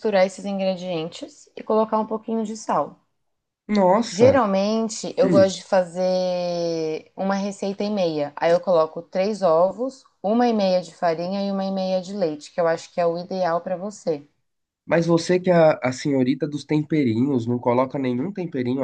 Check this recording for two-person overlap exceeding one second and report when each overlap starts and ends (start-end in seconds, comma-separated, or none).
none